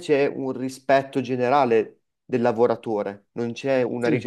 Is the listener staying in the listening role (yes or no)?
yes